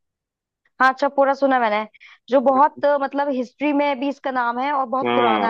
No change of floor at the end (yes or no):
no